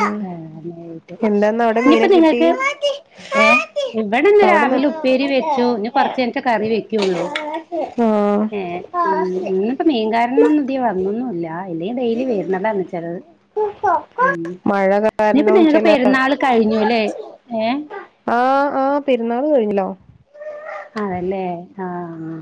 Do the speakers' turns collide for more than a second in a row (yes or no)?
no